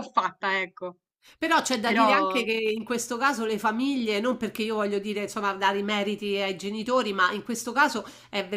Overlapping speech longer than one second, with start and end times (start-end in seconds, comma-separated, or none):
none